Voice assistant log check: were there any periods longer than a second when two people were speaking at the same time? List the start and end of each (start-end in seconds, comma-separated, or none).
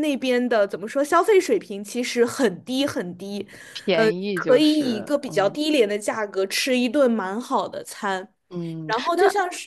3.9-5.6